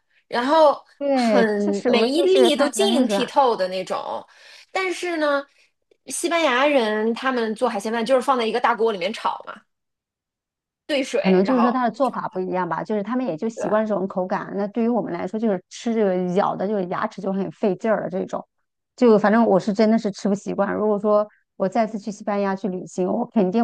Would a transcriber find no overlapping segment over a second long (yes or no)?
no